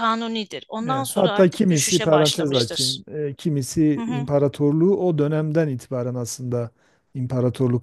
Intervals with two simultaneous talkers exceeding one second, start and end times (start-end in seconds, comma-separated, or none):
0.9-3.0